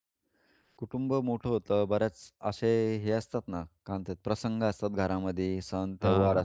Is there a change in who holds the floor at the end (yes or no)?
no